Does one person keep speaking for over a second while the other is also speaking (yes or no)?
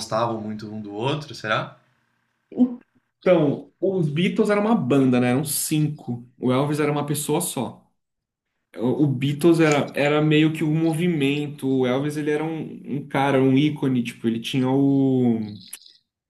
no